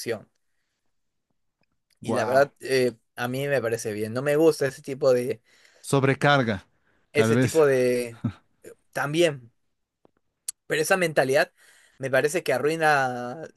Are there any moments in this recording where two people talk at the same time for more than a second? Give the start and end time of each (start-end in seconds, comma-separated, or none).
none